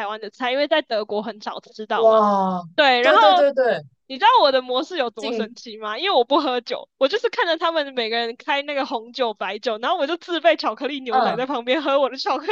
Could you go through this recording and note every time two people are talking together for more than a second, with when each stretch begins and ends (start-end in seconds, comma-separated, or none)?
none